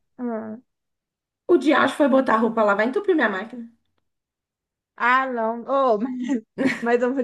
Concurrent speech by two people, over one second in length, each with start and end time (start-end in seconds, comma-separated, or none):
none